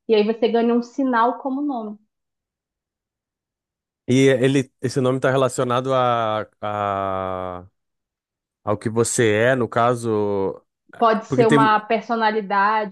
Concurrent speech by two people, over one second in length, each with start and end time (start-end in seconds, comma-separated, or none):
none